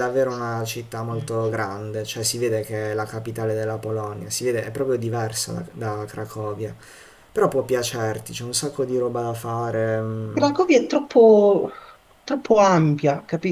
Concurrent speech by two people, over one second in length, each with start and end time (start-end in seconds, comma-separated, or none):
none